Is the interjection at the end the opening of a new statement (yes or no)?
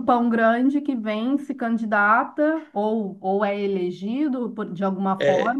no